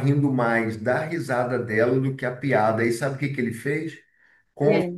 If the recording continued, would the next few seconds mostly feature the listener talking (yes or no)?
no